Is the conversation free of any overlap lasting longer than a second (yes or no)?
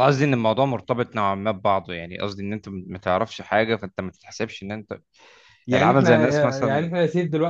no